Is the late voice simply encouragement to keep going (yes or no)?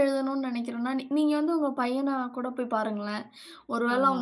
yes